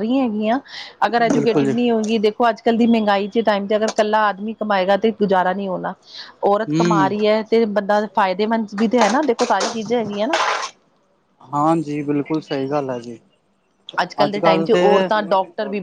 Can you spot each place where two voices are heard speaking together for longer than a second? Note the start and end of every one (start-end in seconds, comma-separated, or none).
none